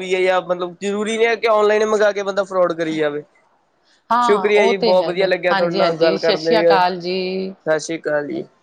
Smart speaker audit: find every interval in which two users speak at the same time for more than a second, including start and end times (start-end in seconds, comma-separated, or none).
4.2-7.5